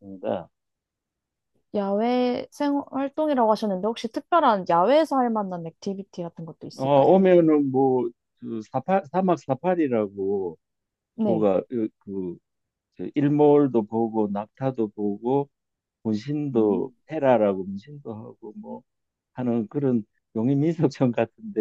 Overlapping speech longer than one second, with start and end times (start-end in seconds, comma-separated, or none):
none